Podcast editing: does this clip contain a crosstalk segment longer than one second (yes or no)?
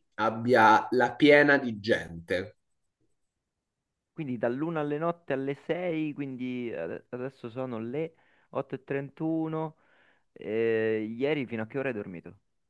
no